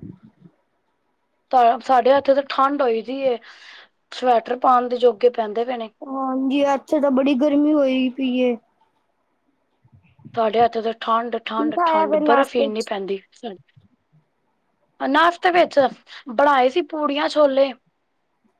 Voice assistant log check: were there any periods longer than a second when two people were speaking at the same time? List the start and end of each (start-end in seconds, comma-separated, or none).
11.4-12.9